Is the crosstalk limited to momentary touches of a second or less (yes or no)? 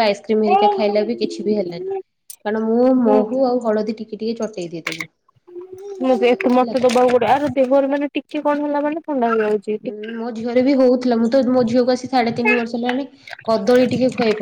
yes